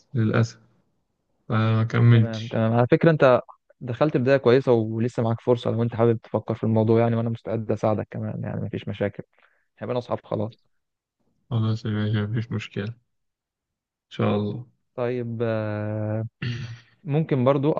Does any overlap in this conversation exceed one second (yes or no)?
no